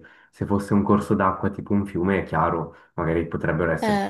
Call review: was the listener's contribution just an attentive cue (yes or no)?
yes